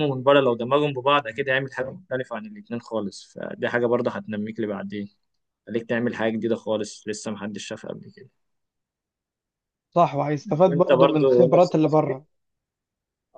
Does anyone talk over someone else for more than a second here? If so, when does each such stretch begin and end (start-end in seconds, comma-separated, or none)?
10.7-12.2